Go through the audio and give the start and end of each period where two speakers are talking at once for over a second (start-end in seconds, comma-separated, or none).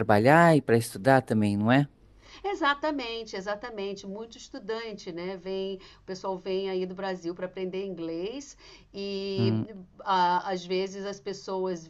none